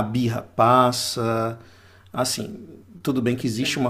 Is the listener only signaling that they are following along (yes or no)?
yes